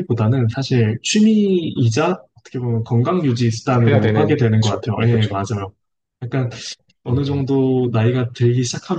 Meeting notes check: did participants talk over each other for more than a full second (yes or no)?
yes